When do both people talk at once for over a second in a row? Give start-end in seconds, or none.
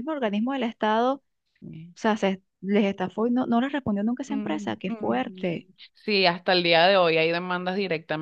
4.3-5.7